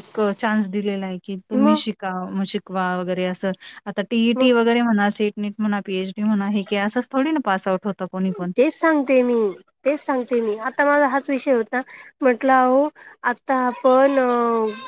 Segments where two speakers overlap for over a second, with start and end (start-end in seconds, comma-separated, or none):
none